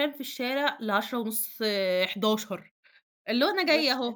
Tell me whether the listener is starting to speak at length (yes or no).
no